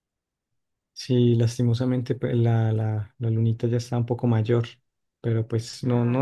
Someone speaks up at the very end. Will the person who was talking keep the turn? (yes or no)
yes